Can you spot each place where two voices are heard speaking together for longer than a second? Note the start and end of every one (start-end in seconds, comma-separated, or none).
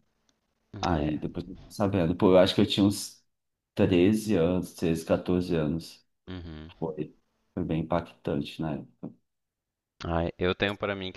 none